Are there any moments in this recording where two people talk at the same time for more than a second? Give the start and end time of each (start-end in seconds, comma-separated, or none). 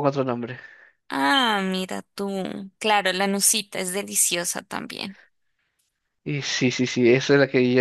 none